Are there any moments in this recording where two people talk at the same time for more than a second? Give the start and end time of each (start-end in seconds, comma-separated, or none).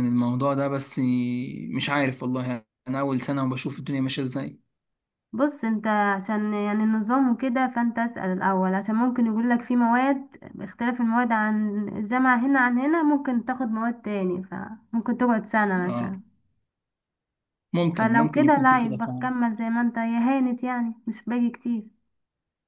17.9-19.3